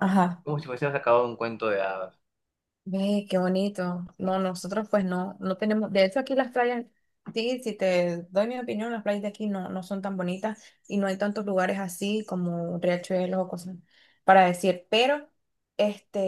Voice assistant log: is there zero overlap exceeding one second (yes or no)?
yes